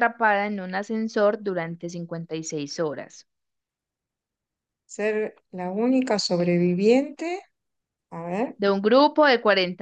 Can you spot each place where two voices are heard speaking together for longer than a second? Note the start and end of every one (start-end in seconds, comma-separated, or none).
none